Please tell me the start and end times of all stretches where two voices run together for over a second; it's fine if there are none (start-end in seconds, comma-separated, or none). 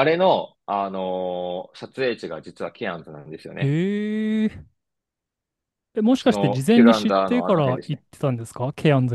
6.2-8.0